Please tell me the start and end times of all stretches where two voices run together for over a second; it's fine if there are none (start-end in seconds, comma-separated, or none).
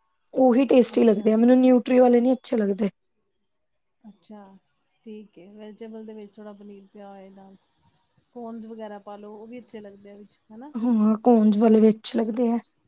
none